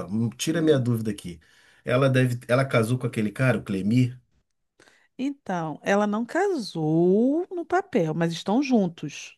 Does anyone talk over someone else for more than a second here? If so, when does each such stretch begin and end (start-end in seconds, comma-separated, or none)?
none